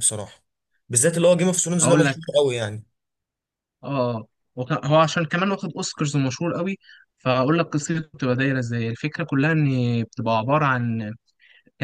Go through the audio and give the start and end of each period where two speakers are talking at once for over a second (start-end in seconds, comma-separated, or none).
none